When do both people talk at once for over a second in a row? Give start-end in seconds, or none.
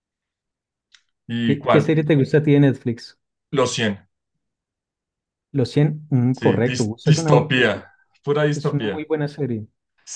6.3-7.7